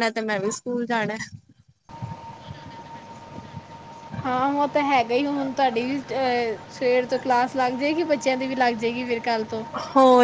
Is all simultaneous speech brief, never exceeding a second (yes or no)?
yes